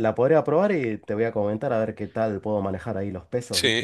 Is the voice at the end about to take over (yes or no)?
yes